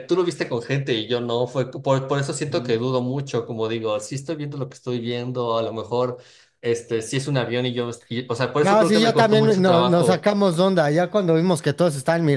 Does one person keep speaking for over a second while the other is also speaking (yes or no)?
yes